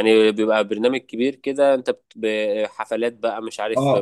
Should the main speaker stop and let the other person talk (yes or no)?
yes